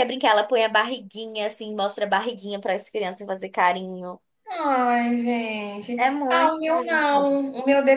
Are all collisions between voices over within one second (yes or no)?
no